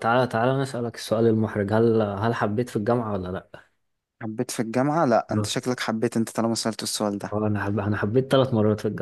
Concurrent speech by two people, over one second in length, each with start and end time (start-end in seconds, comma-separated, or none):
none